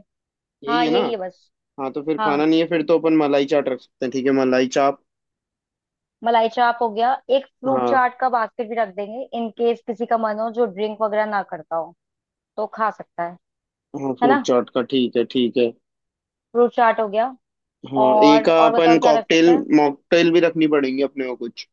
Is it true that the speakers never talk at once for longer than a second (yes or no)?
no